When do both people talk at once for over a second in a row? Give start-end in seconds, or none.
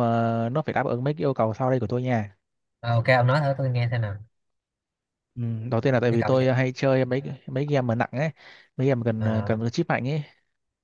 none